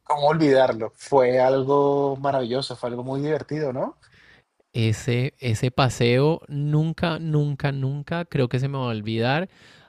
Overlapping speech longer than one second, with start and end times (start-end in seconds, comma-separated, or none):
none